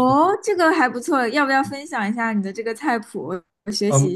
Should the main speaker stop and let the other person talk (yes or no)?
yes